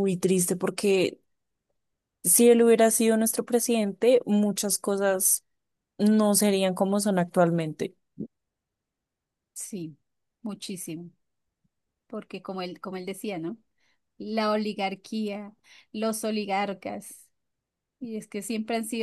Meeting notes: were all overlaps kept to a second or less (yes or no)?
yes